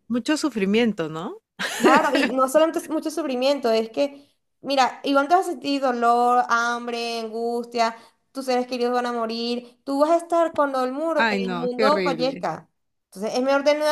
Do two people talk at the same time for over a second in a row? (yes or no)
yes